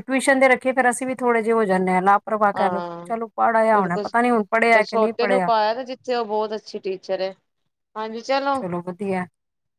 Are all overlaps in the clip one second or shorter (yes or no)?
yes